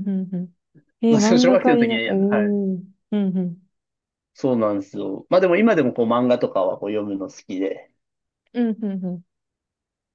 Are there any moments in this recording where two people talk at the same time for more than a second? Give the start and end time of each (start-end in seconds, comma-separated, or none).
1.1-2.6